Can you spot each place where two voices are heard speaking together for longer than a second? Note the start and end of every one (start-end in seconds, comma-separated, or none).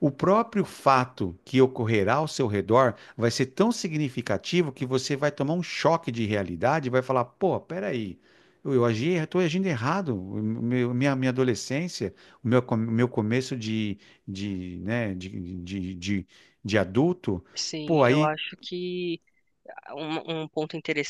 none